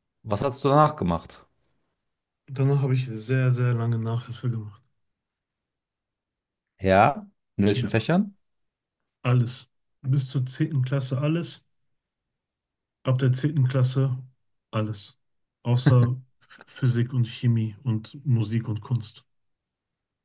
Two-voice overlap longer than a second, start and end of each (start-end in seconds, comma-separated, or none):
none